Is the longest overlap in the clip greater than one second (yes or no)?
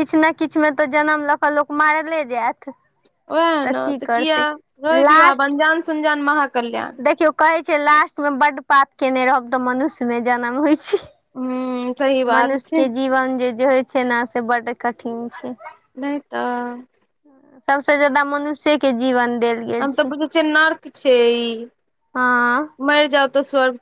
no